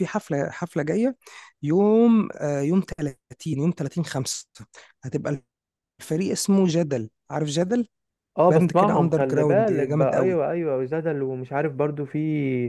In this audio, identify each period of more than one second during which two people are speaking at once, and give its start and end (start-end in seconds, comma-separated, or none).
8.5-10.4